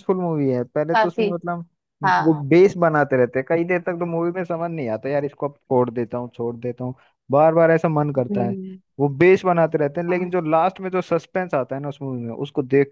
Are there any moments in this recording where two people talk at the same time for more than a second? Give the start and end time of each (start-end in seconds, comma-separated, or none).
none